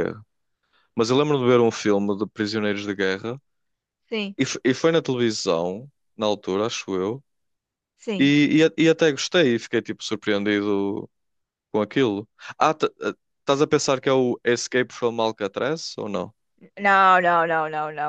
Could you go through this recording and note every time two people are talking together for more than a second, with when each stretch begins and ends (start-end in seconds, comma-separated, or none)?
none